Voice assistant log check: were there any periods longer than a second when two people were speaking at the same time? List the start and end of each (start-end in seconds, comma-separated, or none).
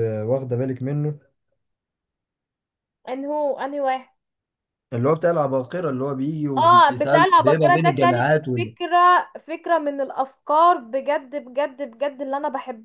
6.6-8.7